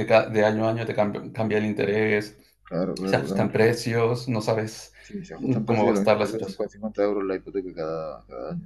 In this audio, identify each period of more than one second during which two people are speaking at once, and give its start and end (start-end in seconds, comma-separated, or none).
5.4-6.6